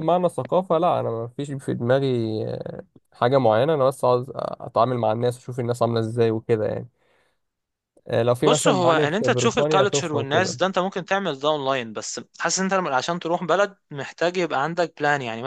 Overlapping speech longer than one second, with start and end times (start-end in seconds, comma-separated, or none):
8.4-10.6